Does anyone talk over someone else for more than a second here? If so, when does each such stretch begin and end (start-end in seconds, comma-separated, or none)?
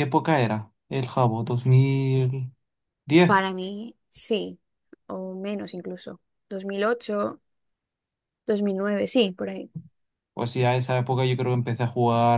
none